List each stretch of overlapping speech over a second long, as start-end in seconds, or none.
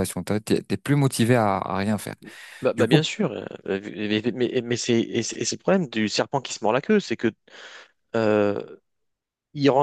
none